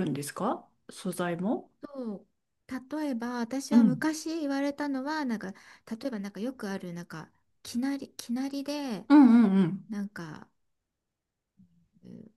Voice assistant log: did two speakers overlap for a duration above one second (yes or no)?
no